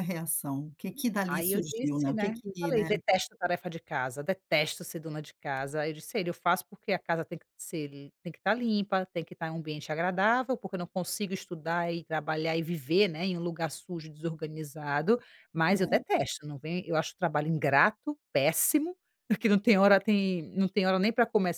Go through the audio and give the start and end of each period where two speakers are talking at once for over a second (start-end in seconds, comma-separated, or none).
1.3-2.9